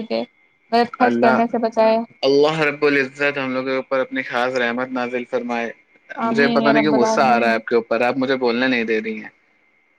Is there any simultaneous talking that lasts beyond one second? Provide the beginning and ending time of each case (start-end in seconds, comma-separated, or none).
6.3-7.6